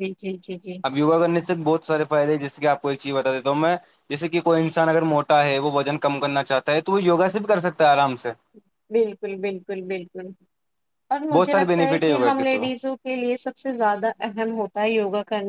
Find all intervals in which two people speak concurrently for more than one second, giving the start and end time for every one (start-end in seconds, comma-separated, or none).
11.3-12.6